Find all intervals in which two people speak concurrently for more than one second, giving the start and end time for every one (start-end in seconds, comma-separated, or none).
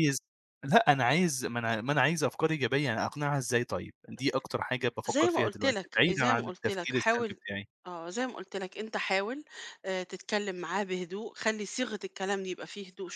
5.0-7.4